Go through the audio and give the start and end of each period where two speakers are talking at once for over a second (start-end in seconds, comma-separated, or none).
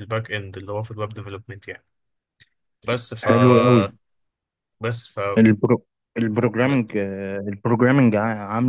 none